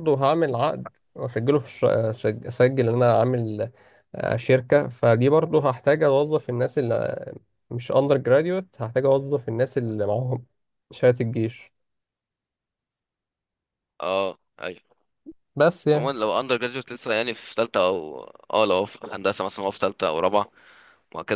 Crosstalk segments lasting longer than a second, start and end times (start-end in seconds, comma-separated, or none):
none